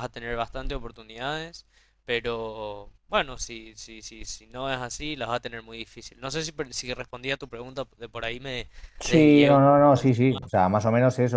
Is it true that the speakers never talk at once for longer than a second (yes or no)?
no